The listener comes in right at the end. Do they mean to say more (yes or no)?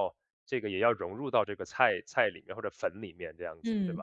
yes